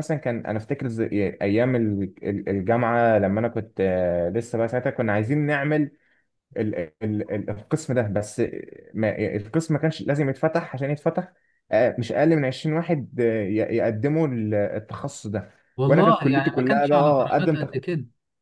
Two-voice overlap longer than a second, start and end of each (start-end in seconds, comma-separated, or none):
15.9-17.7